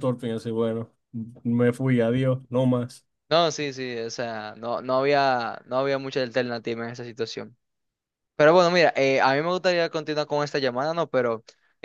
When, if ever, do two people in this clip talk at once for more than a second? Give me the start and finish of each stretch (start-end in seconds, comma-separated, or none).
none